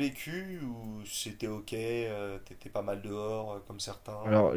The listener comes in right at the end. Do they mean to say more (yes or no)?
yes